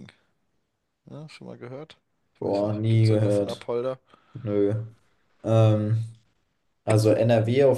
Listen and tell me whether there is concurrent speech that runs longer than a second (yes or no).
yes